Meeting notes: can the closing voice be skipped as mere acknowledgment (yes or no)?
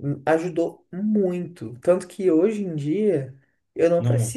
yes